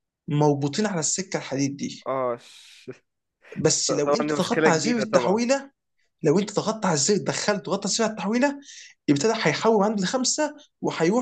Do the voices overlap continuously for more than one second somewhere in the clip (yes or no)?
yes